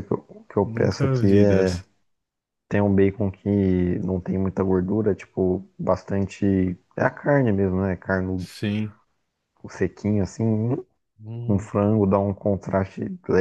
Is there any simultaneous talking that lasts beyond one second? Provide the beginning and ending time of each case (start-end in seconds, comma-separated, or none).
0.6-1.8